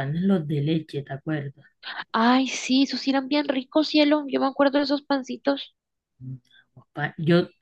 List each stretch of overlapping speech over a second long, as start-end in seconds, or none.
none